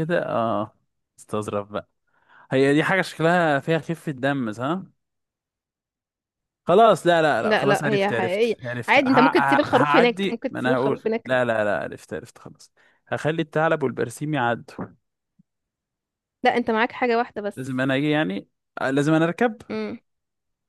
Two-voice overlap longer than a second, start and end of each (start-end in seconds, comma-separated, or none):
7.4-11.3